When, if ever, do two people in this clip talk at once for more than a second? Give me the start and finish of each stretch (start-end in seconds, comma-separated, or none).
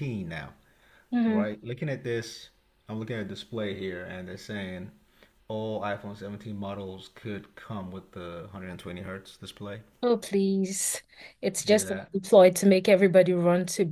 none